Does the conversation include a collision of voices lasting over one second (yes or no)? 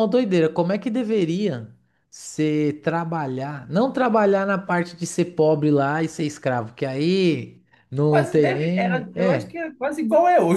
yes